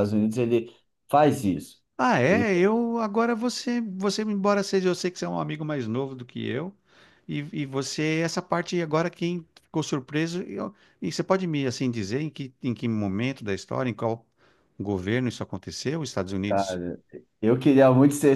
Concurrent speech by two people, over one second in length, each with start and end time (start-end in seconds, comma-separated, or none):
none